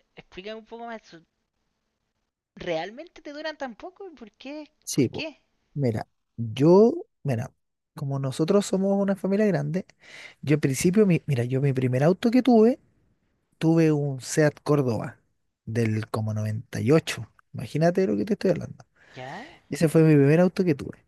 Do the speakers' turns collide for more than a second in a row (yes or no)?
no